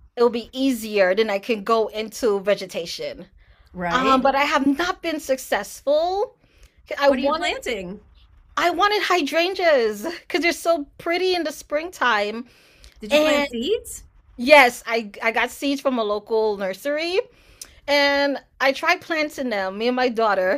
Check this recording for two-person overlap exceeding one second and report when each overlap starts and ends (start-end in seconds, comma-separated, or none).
none